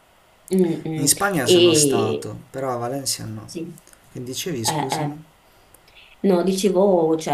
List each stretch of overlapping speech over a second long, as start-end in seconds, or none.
1.0-2.3